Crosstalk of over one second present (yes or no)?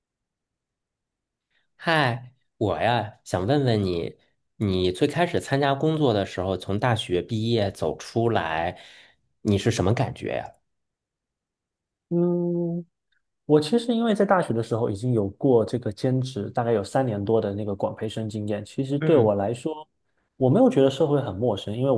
no